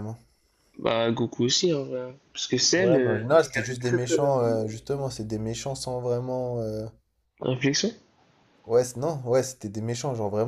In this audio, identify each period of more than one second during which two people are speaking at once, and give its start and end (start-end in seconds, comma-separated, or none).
2.8-4.7